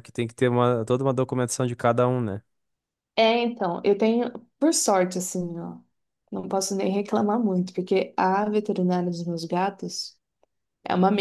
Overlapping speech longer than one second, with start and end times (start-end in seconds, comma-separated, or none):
none